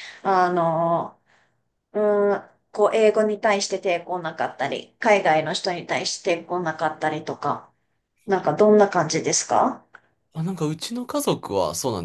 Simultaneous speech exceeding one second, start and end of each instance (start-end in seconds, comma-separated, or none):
none